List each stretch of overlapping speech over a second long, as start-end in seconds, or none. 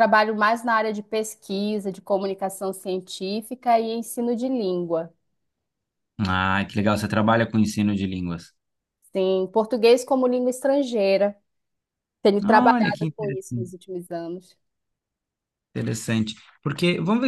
12.4-13.8